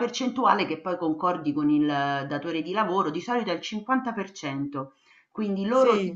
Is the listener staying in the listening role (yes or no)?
yes